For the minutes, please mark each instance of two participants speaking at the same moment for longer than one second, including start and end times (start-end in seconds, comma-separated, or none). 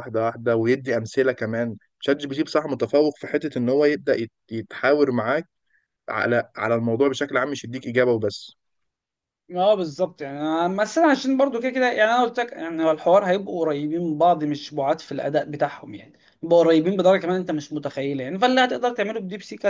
none